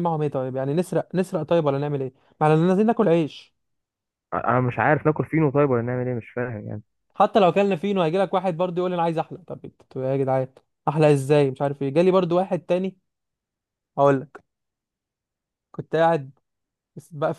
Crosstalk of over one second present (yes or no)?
no